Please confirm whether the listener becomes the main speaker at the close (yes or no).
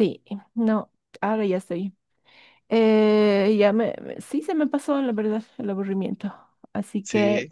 no